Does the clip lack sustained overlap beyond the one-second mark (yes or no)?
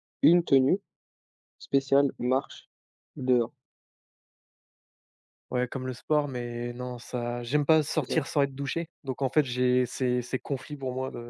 yes